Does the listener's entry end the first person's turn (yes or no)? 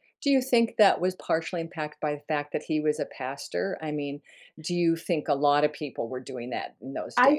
yes